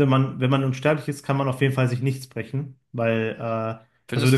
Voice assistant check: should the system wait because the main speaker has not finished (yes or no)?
yes